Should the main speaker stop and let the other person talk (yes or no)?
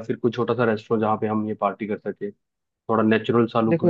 yes